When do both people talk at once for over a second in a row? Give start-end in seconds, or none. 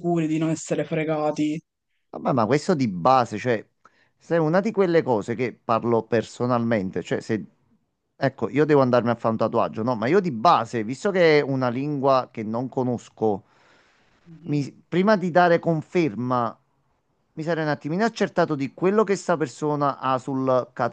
none